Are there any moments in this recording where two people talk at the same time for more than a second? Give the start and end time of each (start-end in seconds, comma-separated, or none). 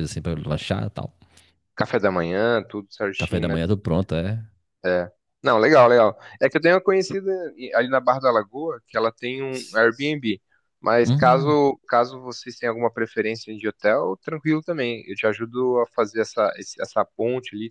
none